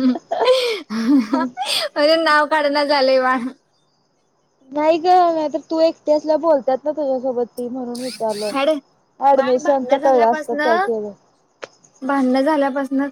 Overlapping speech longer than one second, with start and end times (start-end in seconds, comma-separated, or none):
9.4-10.6